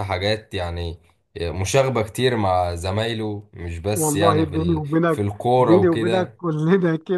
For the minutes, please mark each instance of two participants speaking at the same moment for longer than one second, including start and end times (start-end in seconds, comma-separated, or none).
3.9-6.4